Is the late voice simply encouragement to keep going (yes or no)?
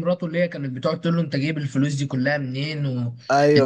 no